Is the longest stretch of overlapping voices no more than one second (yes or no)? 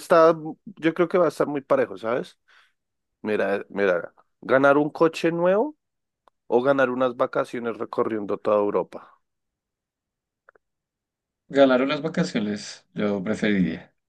yes